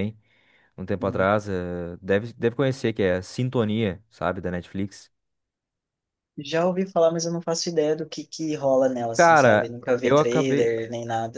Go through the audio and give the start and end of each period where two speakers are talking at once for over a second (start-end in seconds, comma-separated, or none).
9.2-10.7